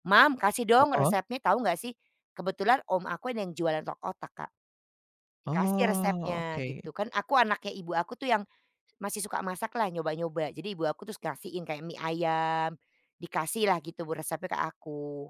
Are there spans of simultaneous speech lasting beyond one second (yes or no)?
yes